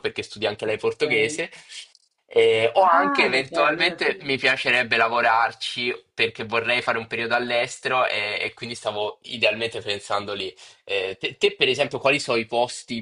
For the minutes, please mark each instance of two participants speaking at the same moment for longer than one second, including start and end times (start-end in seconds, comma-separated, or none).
2.8-4.3